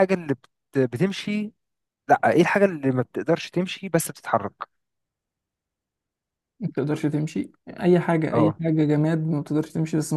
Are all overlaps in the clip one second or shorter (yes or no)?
yes